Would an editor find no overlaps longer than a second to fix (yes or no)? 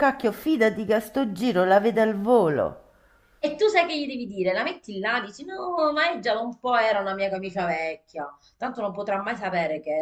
yes